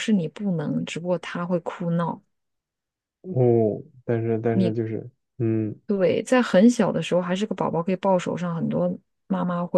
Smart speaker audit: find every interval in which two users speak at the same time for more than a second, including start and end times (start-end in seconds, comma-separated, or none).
none